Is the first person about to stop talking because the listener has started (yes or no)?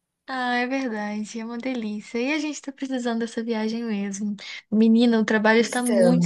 no